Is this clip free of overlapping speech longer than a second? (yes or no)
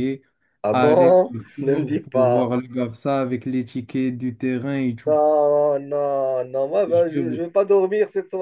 no